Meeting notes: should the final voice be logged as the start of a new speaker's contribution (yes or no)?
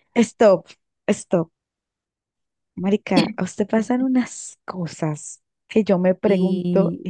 no